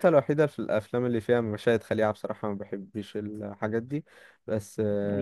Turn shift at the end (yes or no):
no